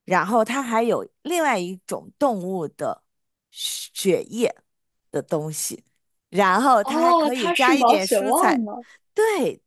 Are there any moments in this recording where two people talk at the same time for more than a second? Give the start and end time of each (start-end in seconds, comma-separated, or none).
6.8-8.6